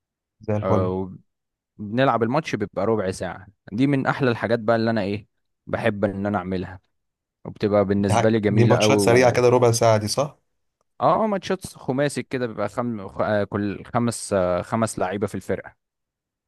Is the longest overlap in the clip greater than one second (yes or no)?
yes